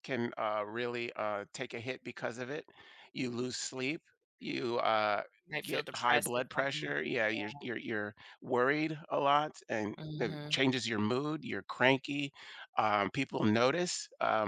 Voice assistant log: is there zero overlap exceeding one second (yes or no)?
no